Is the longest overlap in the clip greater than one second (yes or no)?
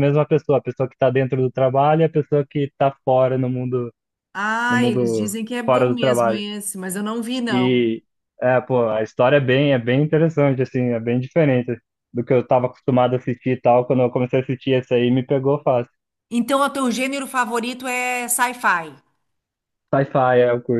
yes